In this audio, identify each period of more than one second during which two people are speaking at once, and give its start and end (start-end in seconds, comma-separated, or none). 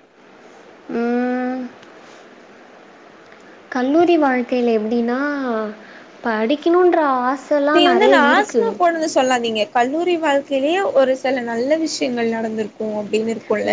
none